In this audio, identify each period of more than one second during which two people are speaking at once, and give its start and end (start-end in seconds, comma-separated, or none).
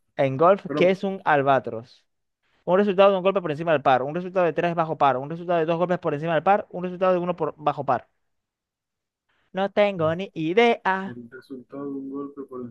none